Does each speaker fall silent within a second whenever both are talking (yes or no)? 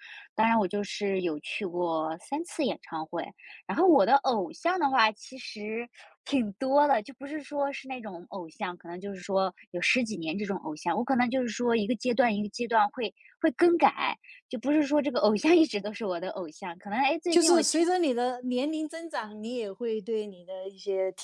yes